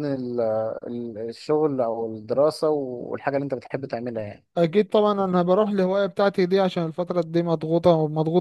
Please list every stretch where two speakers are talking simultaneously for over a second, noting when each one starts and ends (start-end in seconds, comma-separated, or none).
none